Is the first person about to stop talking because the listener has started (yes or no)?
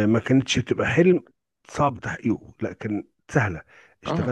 no